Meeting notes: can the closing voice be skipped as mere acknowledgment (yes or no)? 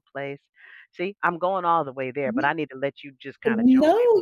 no